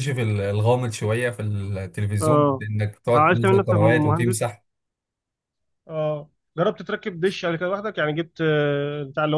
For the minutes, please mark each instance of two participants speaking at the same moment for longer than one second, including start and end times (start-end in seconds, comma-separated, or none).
3.1-4.5